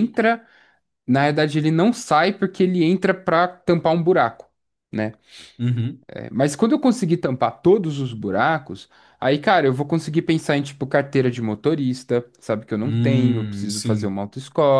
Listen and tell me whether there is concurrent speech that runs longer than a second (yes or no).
yes